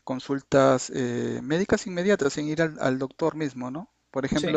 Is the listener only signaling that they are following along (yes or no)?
yes